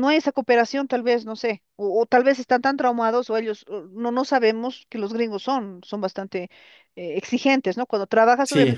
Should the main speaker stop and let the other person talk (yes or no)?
no